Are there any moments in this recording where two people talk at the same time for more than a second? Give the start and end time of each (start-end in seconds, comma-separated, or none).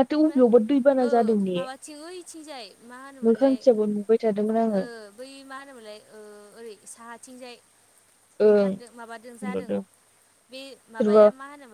none